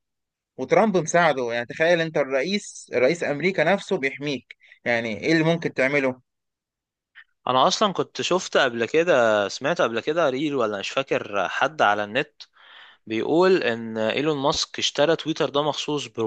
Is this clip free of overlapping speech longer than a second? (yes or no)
yes